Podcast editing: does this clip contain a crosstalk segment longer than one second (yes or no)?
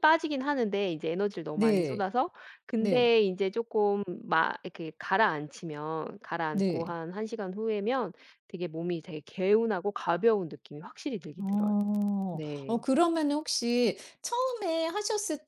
no